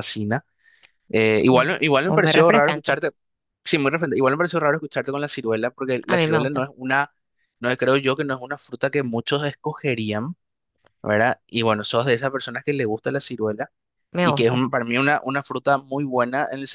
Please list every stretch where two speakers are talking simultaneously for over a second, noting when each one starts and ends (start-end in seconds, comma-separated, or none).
1.5-3.0